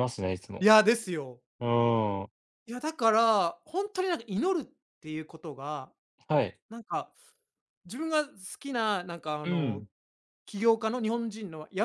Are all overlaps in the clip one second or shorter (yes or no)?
yes